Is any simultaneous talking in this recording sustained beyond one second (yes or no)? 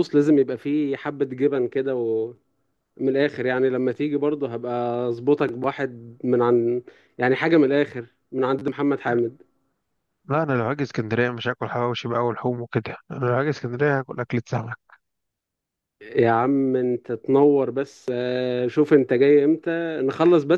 no